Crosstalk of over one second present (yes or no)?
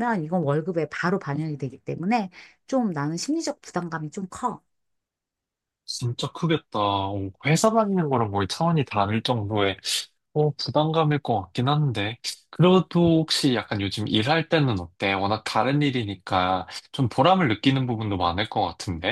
no